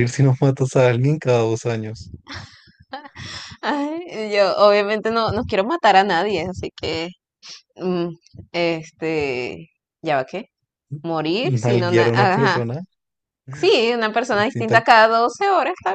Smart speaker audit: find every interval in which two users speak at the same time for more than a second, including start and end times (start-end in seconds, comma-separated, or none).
11.4-12.6